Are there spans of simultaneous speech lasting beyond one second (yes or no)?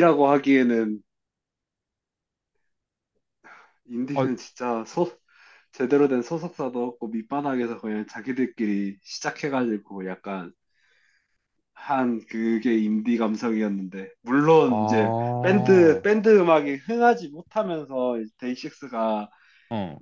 yes